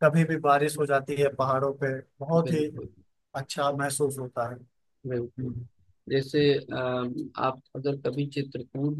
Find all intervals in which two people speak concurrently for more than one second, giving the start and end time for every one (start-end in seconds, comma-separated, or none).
none